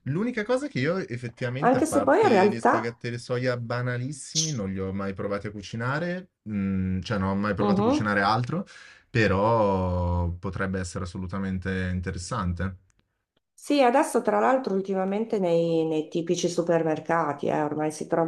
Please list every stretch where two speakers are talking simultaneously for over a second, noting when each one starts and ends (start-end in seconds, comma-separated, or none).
1.6-2.9